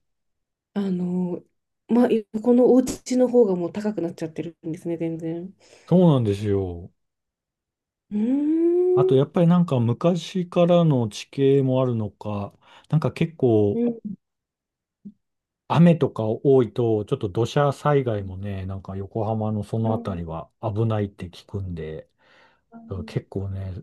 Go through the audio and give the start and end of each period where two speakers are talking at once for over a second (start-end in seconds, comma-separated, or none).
none